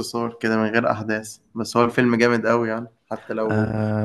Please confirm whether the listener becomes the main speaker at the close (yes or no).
yes